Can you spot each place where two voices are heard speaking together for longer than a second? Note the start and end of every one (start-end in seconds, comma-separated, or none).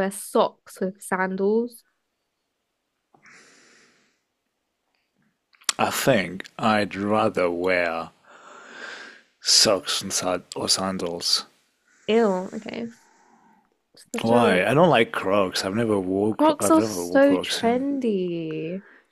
16.3-17.8